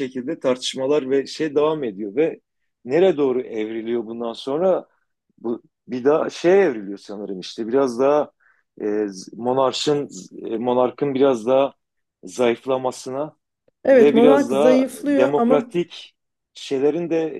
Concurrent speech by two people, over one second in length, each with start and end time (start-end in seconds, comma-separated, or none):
13.9-15.7